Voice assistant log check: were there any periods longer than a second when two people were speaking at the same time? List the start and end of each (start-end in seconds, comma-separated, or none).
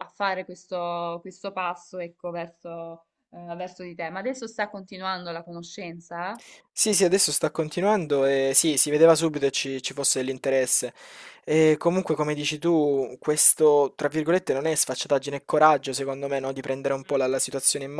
none